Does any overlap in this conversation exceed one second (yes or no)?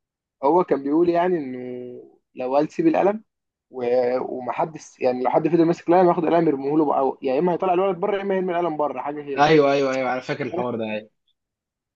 no